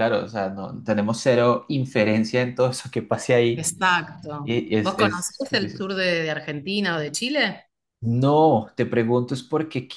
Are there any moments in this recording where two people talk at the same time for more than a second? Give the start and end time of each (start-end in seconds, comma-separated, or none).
4.4-5.9